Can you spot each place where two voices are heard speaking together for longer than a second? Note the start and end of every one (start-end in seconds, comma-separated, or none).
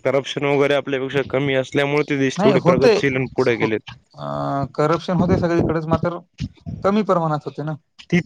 none